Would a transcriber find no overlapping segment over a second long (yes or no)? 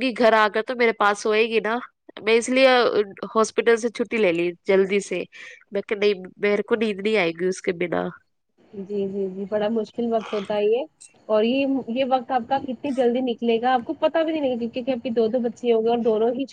yes